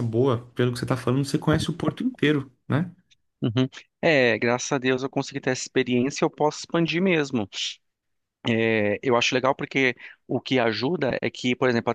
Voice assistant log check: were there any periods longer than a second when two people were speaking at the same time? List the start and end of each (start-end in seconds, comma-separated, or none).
none